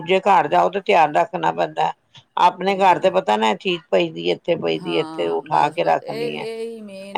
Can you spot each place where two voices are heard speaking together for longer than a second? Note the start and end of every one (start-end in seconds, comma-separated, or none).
4.8-6.5